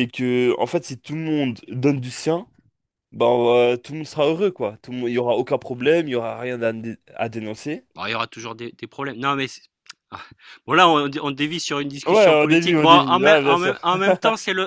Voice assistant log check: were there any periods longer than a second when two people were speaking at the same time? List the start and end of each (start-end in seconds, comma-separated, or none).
12.1-13.8